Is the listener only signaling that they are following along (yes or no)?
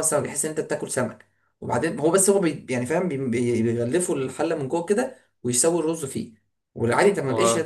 yes